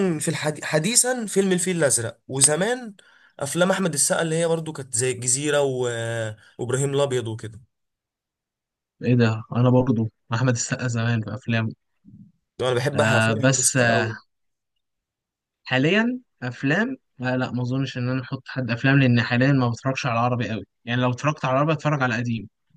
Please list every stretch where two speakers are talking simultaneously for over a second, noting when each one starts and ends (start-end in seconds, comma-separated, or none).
12.9-14.1